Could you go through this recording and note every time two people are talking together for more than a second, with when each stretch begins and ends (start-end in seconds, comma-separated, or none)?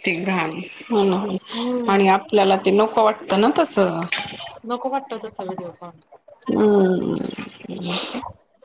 none